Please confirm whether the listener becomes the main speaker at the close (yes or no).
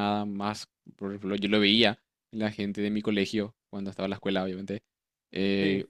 no